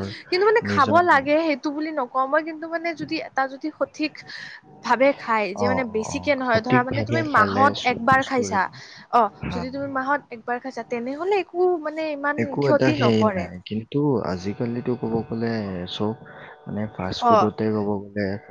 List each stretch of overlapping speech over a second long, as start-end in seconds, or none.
5.7-8.6